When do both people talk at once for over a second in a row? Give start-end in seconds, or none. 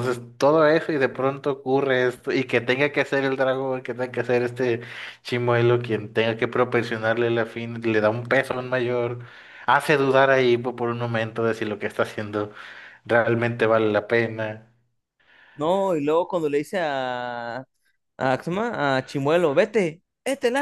none